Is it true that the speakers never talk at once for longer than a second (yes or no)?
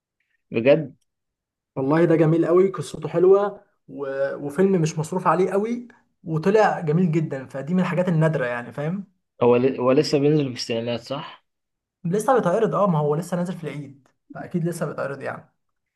yes